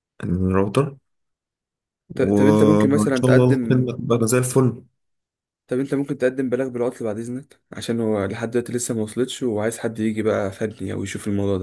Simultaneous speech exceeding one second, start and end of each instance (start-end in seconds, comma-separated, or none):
2.1-3.9